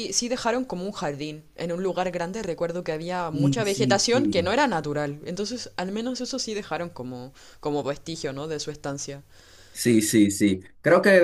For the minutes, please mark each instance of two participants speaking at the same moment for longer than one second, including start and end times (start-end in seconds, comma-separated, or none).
3.3-4.5